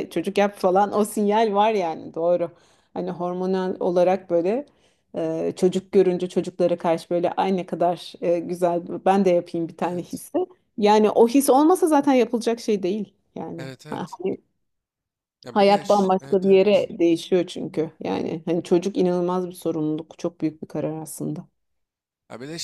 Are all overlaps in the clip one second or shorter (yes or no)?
no